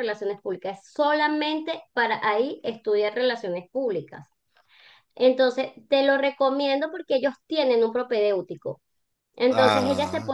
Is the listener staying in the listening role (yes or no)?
yes